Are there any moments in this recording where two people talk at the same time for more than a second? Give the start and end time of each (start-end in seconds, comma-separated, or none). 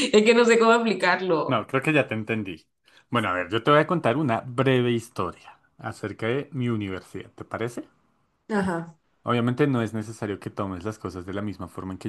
none